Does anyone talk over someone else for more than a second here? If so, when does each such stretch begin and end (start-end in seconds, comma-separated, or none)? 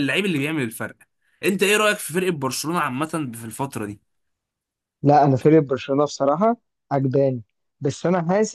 none